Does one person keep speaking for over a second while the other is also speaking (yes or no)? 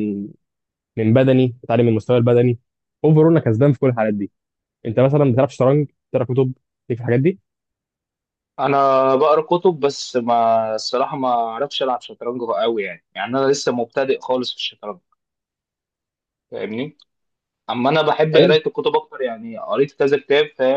no